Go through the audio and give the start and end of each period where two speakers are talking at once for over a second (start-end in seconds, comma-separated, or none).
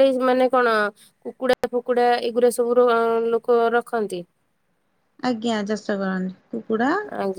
none